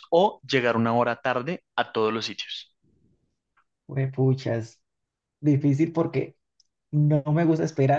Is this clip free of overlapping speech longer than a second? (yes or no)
yes